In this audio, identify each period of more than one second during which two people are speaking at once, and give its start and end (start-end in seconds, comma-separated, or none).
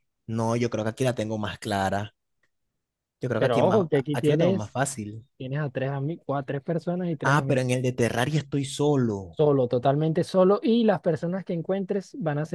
3.4-4.8